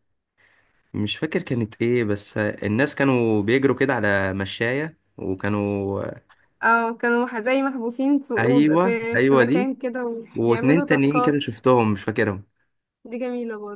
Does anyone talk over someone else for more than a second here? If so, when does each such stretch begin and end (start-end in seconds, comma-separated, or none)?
8.4-9.7, 10.3-11.6